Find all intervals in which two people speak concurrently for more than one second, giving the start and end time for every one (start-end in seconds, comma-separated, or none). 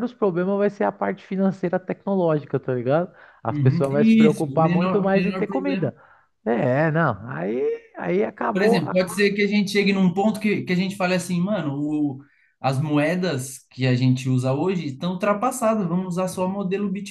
3.5-5.9